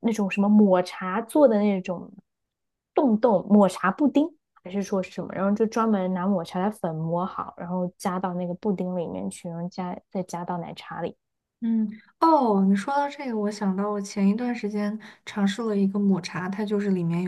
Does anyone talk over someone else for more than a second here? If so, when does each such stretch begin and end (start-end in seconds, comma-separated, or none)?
none